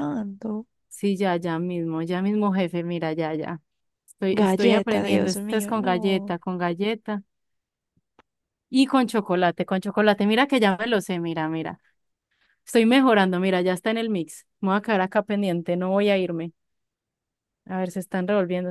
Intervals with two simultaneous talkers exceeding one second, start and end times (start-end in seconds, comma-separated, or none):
4.3-6.4